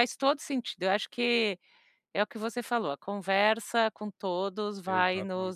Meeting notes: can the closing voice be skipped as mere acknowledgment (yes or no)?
yes